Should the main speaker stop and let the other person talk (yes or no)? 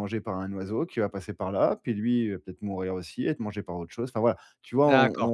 yes